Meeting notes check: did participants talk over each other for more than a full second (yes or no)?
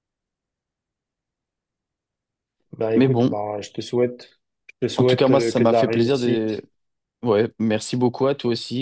yes